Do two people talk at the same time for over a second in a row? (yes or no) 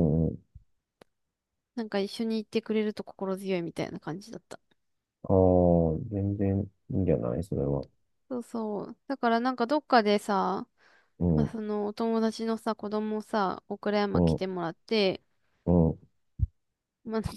no